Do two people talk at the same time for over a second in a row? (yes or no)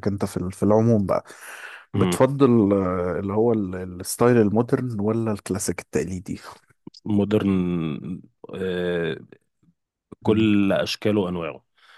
no